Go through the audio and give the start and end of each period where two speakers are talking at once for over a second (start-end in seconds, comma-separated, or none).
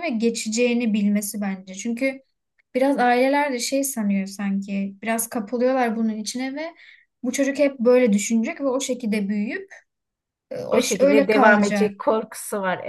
10.7-11.9